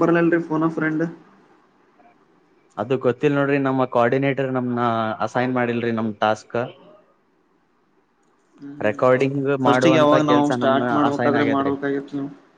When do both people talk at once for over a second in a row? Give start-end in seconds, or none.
9.6-11.7